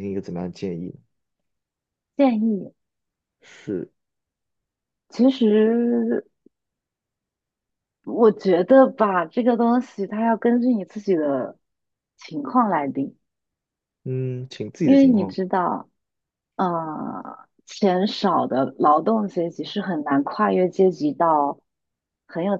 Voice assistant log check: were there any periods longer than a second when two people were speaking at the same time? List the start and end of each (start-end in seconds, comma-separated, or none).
none